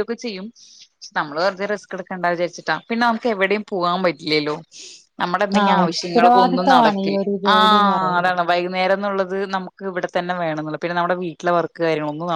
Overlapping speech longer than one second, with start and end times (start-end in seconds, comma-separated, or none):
5.6-8.3